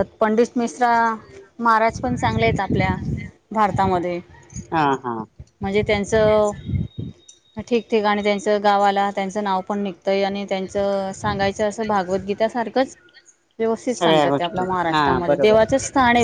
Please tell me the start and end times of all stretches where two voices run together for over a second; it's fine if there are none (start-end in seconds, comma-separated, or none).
13.9-15.6